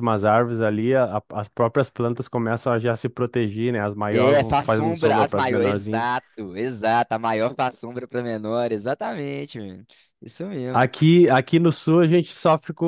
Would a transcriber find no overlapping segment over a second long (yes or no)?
no